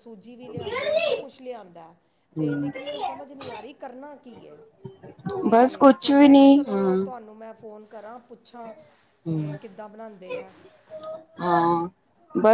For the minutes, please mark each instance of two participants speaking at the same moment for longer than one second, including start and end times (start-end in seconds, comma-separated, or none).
5.5-6.9